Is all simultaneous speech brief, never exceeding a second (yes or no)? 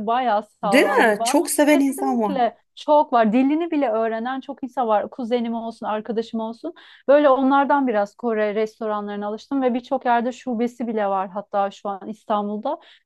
no